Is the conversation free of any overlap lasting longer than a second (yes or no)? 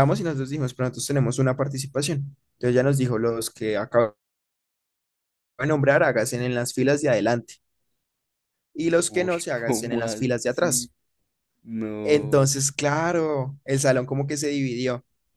no